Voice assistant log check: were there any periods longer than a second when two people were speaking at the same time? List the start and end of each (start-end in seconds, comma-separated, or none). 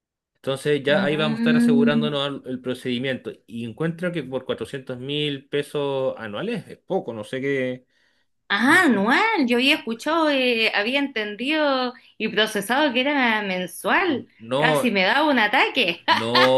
0.9-2.1